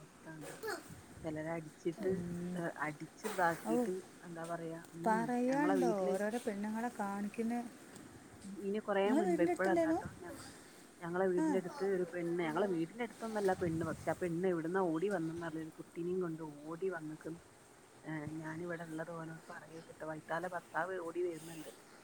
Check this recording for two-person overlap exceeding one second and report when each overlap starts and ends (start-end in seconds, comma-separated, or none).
none